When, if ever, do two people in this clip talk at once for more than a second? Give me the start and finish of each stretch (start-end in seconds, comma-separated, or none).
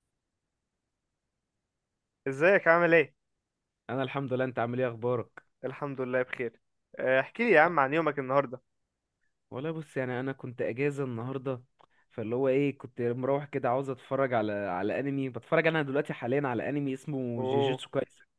none